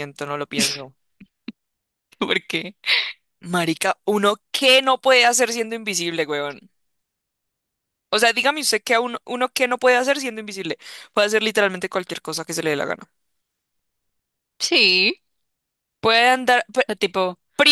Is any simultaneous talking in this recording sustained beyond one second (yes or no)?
no